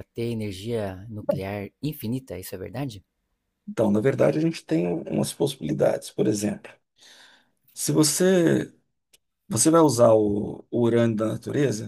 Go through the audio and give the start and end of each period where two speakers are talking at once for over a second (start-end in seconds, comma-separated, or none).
none